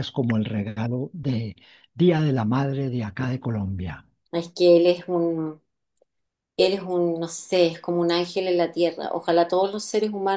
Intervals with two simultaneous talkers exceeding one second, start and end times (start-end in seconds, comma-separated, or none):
none